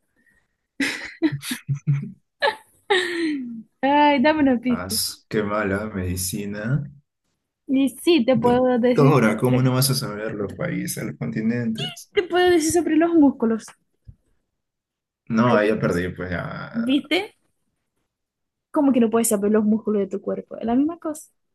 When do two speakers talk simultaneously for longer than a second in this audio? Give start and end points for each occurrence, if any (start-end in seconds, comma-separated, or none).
8.3-9.7